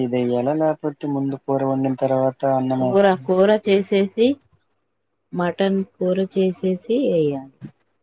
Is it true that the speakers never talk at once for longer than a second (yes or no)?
no